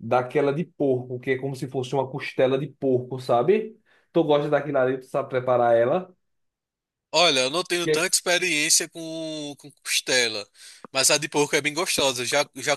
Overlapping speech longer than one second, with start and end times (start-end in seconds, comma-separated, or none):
none